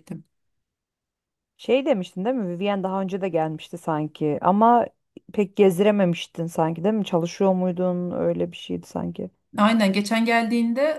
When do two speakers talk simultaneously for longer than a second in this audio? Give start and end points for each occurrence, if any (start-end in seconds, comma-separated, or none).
none